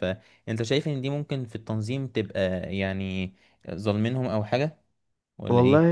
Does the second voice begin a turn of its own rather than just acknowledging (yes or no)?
yes